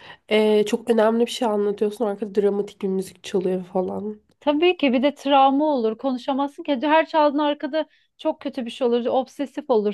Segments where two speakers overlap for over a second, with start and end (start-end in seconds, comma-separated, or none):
none